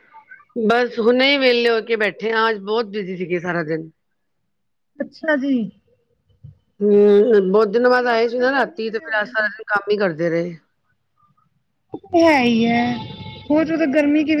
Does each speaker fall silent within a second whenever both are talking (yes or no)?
no